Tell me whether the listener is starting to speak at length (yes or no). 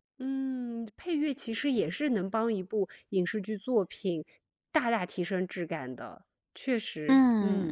yes